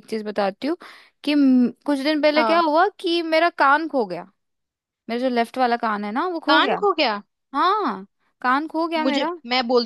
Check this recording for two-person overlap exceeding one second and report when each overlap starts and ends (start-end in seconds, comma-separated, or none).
none